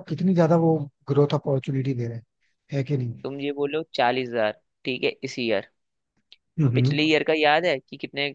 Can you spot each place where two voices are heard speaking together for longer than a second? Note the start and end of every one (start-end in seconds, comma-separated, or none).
none